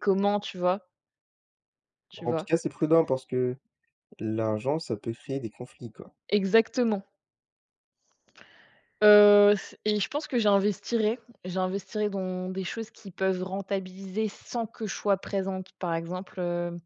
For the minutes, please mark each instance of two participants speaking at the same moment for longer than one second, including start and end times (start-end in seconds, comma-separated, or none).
none